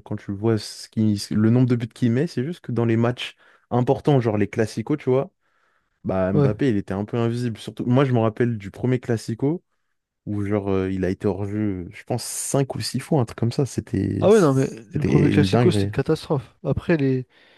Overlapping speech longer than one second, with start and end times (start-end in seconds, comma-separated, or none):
14.2-15.9